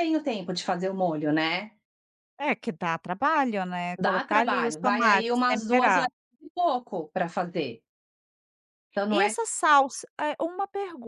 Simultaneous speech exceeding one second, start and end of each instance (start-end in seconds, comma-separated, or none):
4.0-6.0